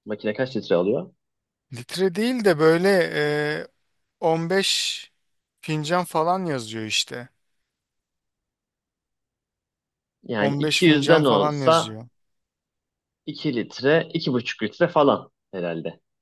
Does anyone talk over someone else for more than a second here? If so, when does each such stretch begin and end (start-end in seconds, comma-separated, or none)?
10.4-12.0